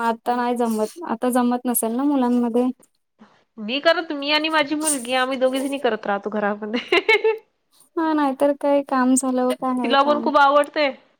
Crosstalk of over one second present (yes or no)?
no